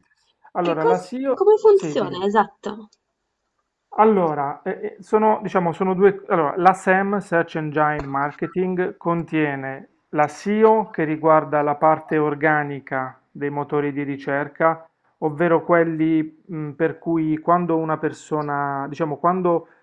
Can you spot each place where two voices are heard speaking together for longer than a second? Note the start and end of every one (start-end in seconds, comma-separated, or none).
0.6-2.2